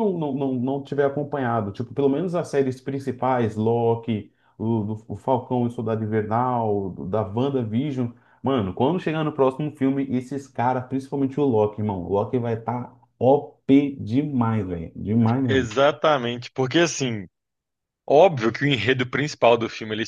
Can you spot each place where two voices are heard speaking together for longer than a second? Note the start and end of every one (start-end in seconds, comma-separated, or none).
none